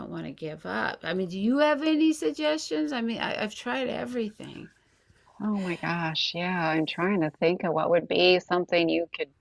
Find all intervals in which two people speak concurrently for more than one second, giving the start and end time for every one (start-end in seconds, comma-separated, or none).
none